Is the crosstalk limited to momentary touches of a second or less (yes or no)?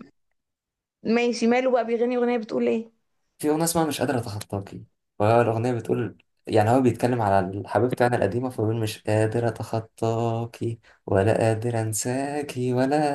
yes